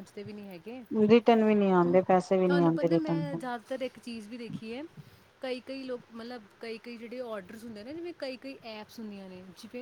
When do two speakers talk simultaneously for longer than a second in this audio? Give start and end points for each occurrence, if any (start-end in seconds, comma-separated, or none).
none